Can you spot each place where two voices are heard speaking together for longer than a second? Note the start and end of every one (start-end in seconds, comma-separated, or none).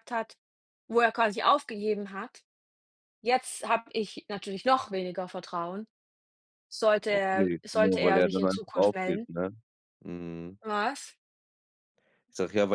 7.1-9.3